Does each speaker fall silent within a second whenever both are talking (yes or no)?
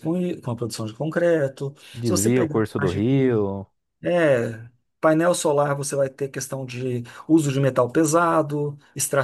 no